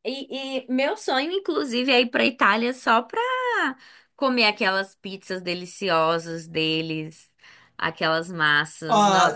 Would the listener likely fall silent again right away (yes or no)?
no